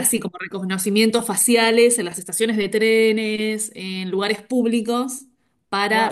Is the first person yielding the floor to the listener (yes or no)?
yes